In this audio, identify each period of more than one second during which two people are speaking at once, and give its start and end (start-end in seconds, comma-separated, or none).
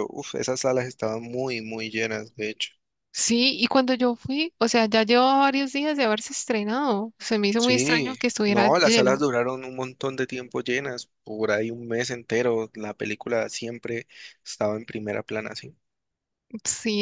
7.6-9.2